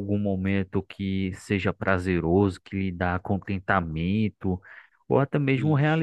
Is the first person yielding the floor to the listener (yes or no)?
no